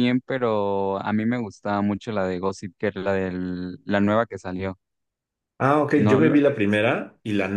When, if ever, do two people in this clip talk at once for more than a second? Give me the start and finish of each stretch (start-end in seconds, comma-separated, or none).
none